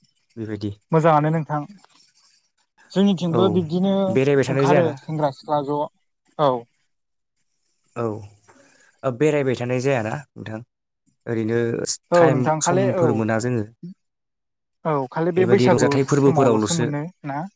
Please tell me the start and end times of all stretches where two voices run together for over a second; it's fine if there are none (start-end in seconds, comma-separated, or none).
15.4-16.9